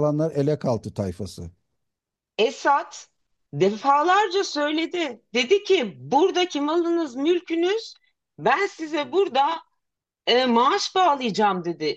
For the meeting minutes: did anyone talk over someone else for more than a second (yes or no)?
no